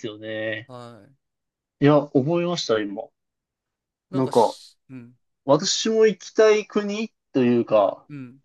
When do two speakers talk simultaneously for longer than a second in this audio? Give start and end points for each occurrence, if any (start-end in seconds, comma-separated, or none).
none